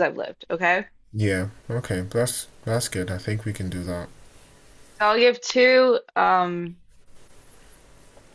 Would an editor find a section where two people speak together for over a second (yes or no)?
no